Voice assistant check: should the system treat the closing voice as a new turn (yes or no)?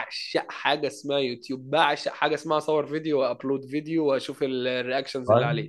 yes